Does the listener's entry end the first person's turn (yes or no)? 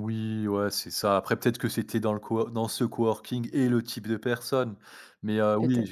no